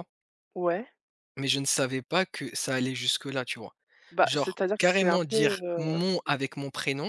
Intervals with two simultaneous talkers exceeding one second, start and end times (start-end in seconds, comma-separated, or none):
4.2-6.1